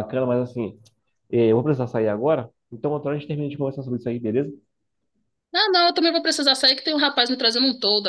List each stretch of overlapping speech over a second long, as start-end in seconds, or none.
none